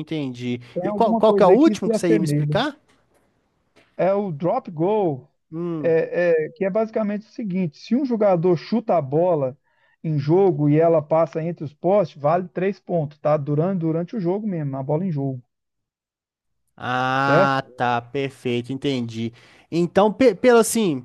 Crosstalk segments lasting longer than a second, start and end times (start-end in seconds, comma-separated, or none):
0.7-2.6